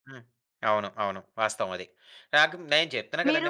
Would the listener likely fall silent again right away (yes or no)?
yes